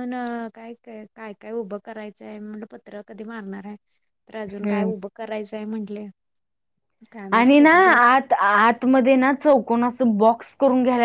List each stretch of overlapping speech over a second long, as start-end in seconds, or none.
none